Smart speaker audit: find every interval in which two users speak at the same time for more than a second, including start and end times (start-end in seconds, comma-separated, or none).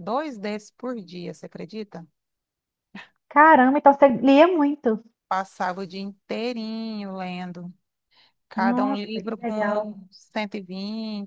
8.6-9.9